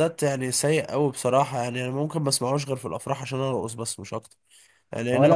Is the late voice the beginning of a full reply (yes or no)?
yes